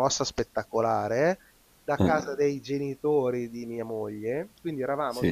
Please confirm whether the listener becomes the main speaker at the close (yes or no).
no